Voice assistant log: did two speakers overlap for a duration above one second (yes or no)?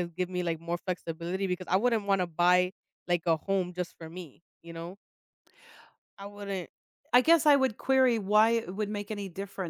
no